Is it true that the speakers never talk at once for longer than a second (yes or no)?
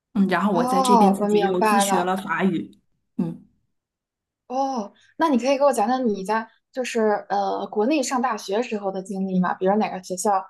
no